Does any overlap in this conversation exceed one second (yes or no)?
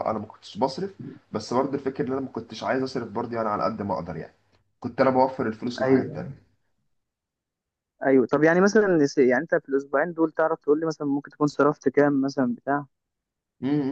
no